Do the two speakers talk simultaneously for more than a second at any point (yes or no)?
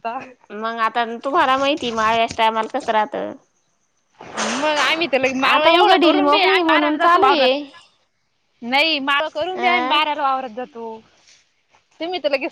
yes